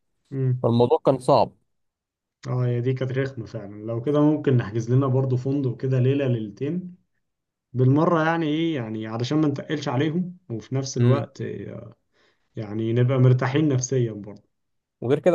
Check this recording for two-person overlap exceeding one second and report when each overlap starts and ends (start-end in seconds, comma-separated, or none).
none